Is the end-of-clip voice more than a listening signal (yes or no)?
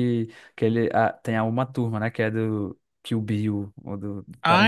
yes